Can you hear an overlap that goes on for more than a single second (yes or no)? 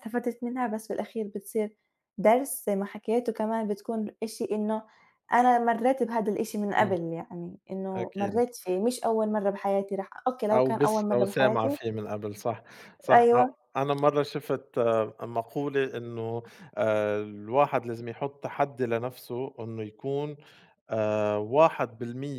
yes